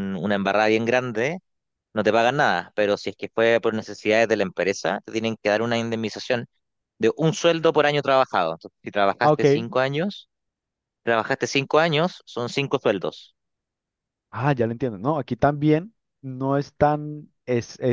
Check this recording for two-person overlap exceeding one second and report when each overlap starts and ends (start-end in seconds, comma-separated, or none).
none